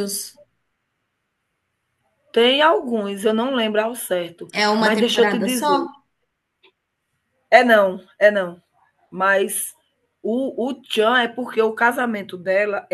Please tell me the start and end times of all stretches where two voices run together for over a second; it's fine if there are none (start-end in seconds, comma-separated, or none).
4.5-5.9